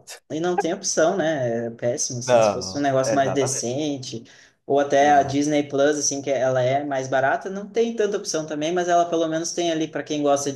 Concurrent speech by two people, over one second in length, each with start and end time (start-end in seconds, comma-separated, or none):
2.2-3.7